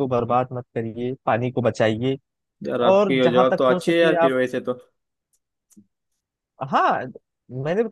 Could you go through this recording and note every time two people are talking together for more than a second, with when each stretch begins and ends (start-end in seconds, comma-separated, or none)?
2.8-4.3